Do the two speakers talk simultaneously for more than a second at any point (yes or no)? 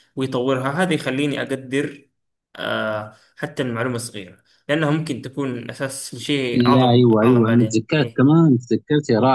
yes